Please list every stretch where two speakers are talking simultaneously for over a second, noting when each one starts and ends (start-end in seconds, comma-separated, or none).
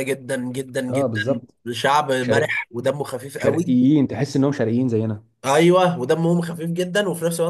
none